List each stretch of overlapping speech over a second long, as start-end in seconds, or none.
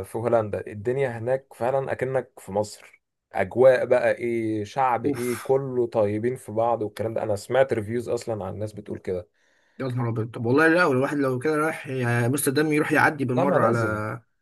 none